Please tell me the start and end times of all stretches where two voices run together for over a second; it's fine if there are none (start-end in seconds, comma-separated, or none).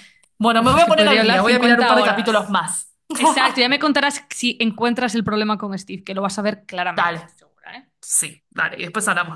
0.6-2.6